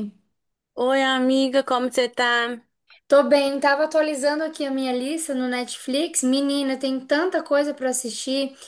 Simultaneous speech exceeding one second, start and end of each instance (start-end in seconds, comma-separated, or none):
none